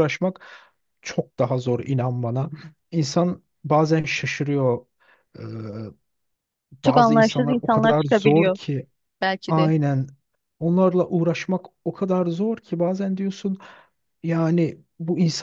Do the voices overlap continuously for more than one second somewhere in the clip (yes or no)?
yes